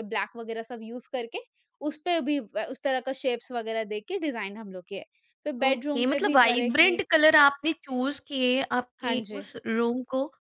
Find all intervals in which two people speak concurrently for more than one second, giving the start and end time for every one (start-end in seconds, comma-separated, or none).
5.6-7.0